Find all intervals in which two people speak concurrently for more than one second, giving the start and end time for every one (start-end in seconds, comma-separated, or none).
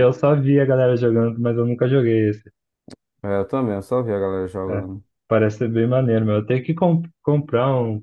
none